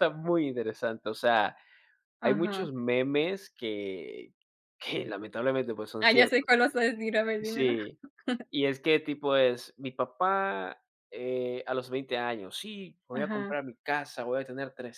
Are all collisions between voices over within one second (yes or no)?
yes